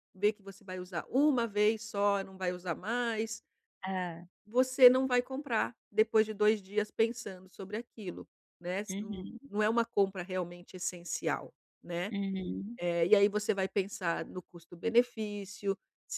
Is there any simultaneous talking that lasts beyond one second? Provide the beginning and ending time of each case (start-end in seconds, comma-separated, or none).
none